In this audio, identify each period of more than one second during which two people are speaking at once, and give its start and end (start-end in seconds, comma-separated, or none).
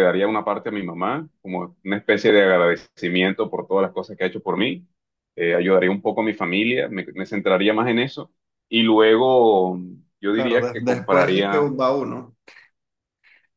10.3-11.7